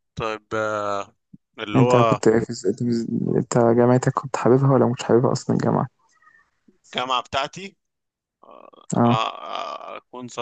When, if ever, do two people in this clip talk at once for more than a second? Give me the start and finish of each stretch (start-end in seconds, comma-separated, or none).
none